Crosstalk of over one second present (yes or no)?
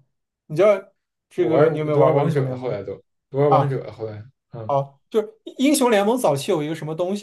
yes